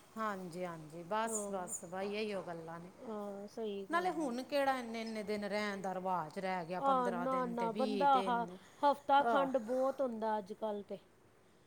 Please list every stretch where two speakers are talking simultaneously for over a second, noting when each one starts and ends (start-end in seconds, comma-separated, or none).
6.9-8.4